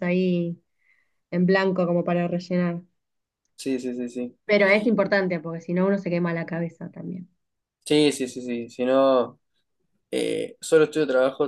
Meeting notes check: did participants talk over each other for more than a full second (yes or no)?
no